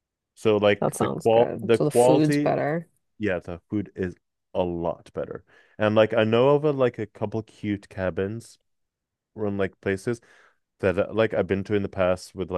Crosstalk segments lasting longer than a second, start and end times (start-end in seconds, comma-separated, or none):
0.8-2.5